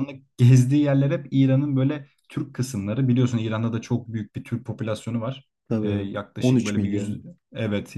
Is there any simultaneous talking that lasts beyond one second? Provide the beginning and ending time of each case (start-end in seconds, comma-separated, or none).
5.7-7.3